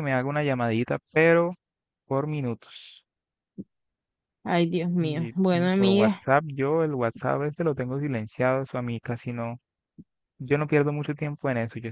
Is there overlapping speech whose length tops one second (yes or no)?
yes